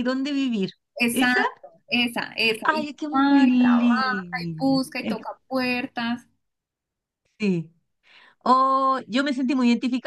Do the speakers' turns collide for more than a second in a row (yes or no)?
yes